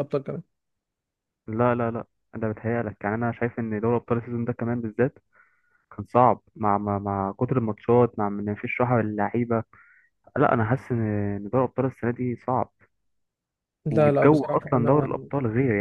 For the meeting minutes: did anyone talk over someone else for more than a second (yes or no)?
yes